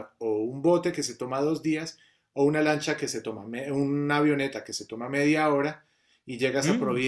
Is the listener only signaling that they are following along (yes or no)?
yes